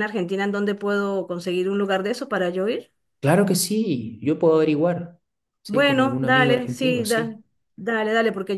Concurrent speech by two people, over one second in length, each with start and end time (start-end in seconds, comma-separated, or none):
5.7-7.4